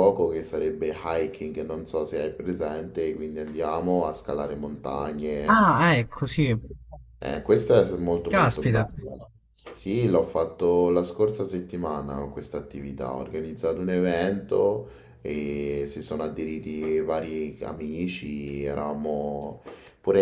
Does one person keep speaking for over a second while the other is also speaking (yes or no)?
no